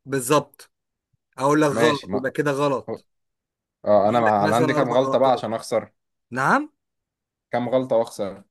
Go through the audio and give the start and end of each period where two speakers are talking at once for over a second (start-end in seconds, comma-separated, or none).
4.0-5.5